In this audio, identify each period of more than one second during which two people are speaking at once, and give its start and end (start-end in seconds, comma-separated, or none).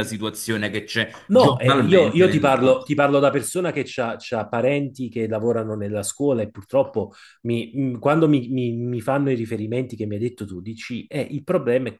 1.3-2.9